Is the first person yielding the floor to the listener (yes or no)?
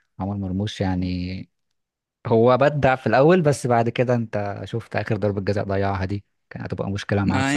yes